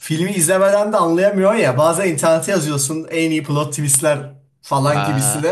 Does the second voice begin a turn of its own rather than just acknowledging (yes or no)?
no